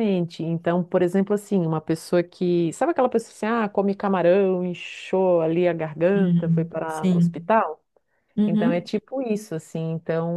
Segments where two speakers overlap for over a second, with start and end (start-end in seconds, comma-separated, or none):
6.2-7.5